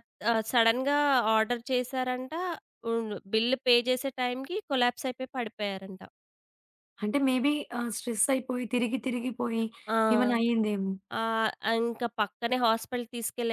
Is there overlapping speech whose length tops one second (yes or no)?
no